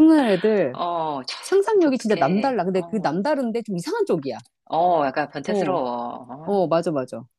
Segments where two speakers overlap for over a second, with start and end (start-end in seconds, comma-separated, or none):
1.8-3.2